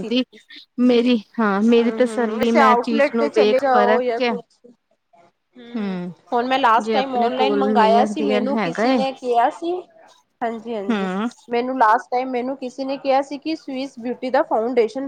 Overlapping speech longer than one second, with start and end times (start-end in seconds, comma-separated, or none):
1.8-4.3, 6.8-9.0